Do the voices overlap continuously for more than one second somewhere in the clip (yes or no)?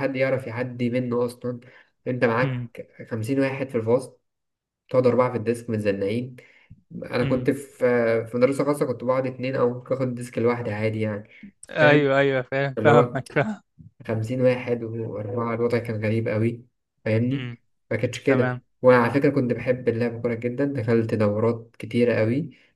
no